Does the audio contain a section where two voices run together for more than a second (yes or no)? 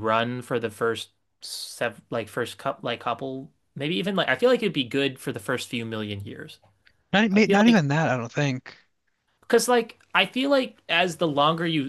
no